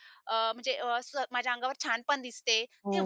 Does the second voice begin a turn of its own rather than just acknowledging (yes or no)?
yes